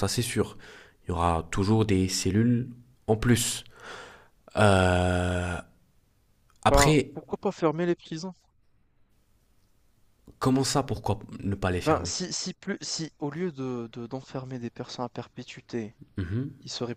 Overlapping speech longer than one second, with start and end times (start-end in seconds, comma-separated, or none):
none